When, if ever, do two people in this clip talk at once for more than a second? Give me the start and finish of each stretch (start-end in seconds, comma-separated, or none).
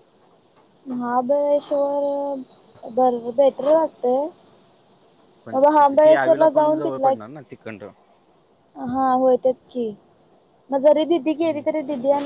5.5-7.2